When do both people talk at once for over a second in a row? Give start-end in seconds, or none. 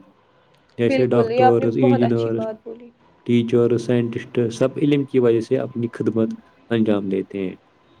0.9-2.4